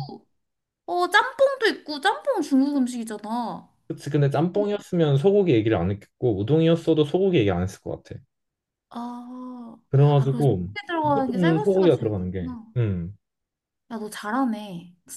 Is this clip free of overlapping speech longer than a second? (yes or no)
no